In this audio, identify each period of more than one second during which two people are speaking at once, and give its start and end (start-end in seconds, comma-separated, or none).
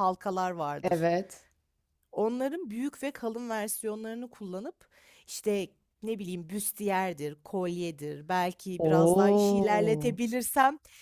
8.8-10.2